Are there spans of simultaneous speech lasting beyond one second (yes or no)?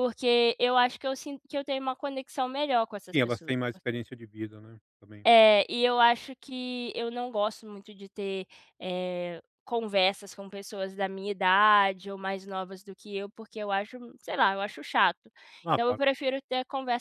no